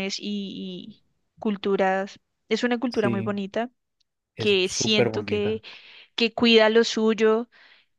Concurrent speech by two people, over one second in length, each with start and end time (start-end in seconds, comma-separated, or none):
4.4-5.6